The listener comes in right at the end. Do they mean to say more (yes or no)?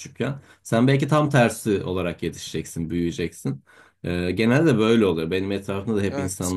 no